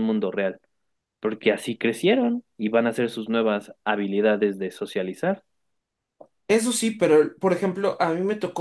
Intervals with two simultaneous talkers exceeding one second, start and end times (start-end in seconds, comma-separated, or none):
none